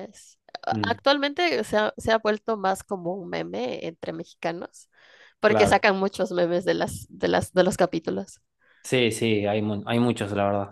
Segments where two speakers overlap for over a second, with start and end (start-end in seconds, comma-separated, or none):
none